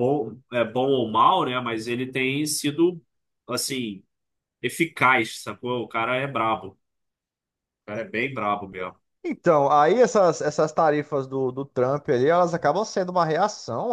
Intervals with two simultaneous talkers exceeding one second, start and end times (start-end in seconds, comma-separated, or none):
none